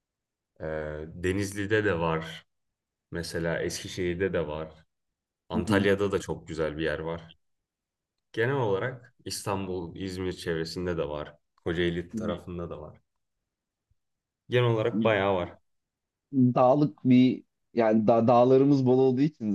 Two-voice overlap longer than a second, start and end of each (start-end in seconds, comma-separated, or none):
none